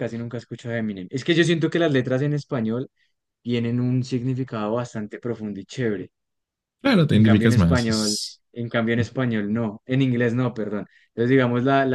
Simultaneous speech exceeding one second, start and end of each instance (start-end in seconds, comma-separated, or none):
7.1-8.4